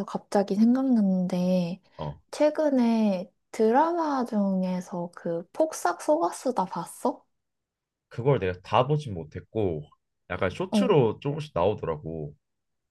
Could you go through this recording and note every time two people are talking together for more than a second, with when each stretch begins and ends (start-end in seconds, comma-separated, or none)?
none